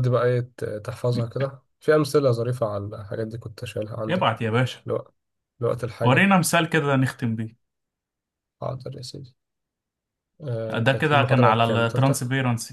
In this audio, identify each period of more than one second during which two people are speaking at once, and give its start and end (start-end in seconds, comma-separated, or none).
10.8-12.2